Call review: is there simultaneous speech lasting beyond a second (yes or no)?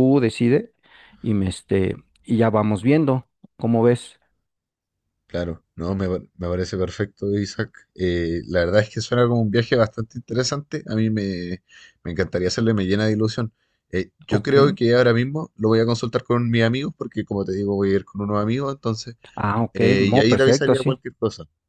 yes